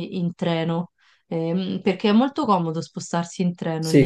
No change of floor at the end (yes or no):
no